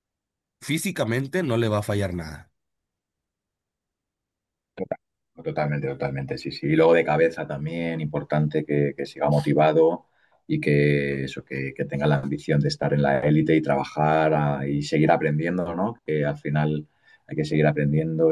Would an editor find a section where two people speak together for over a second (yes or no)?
no